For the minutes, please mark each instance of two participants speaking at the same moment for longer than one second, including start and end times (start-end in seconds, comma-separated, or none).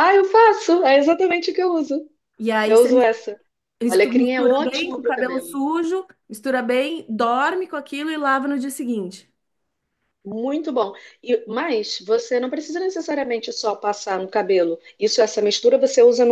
4.0-5.6